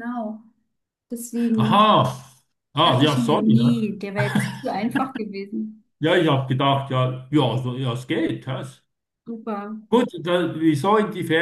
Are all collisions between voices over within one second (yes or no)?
no